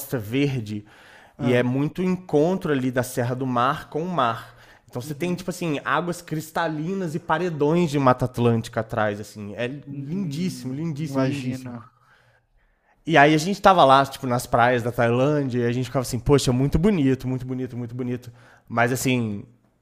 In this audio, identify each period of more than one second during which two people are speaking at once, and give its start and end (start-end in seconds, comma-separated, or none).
9.8-11.7